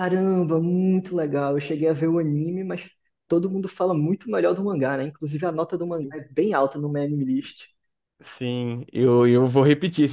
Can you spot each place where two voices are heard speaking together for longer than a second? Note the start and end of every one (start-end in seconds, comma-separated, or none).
none